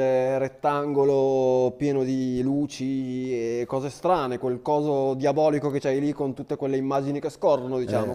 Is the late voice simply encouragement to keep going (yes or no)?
no